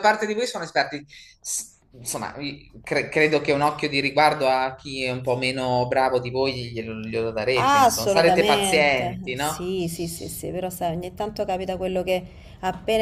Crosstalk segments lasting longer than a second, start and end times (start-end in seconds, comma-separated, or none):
7.6-9.6